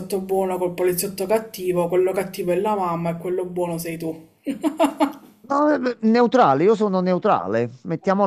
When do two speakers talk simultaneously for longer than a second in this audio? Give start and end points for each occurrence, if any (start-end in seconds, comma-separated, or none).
none